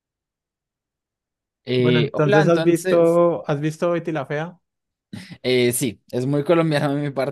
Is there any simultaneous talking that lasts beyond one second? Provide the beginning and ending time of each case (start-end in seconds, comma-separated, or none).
1.8-3.2